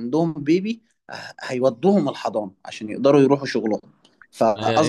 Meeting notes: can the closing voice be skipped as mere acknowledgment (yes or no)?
no